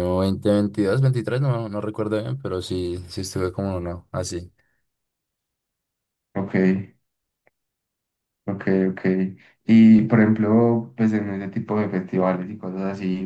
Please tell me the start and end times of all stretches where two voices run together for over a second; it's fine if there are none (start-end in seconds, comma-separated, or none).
none